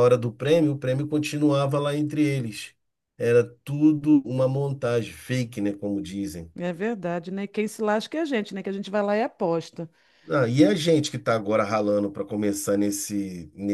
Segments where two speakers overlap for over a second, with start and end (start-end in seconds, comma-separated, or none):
none